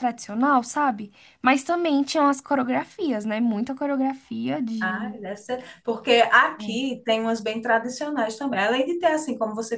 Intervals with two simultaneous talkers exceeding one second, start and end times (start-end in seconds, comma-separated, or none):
none